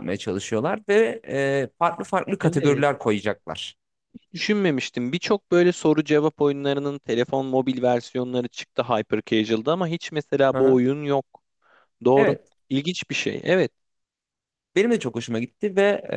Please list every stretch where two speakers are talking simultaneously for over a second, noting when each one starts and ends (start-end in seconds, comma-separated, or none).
none